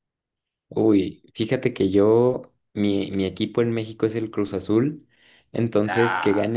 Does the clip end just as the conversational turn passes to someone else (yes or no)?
no